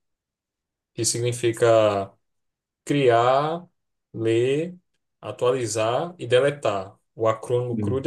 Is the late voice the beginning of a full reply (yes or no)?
no